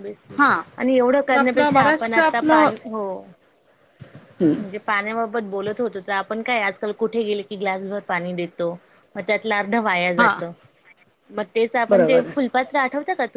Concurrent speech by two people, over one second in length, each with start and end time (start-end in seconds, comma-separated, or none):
1.3-2.7